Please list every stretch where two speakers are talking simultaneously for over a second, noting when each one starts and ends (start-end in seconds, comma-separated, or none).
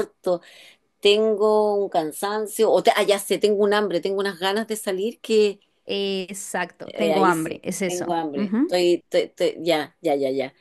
6.8-8.8